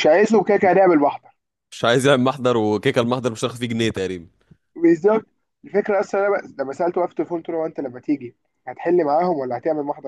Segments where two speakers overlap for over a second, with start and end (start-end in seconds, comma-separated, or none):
none